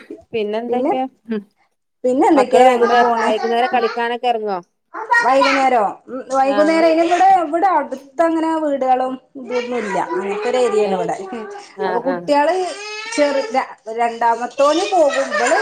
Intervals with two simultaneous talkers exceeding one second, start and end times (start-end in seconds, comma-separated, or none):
2.4-3.9